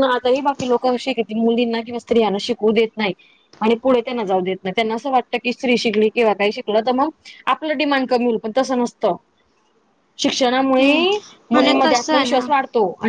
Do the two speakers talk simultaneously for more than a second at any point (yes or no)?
yes